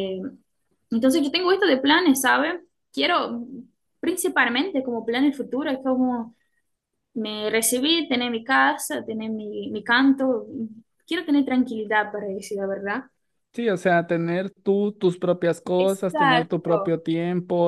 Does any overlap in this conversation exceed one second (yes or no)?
yes